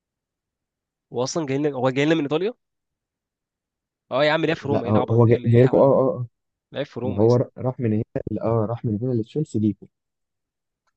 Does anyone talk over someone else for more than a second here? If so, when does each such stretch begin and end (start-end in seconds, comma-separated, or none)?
4.6-6.0